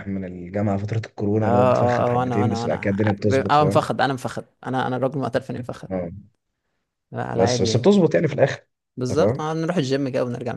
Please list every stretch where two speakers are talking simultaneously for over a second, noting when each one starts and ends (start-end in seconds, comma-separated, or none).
1.4-3.9